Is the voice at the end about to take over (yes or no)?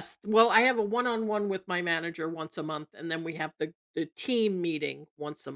yes